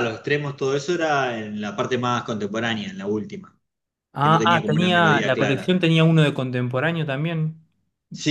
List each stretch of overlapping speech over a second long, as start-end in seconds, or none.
4.2-5.8